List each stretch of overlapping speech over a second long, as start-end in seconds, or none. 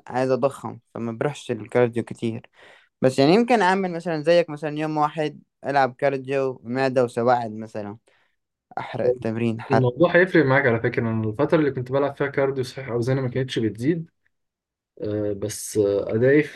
none